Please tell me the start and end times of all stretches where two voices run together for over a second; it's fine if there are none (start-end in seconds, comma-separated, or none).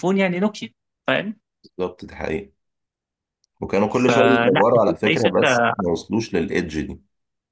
4.1-5.7